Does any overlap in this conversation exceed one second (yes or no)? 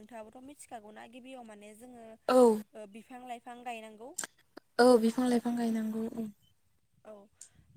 no